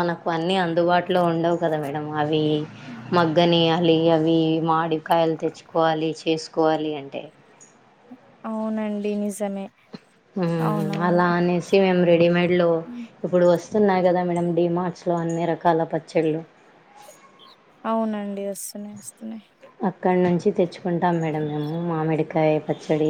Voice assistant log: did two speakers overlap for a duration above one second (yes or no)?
no